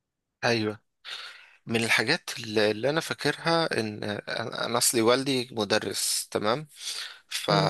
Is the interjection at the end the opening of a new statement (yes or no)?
no